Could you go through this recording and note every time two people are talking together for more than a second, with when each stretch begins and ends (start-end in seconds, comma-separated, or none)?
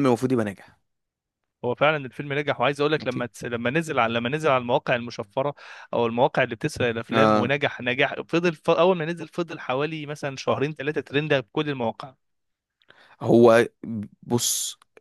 none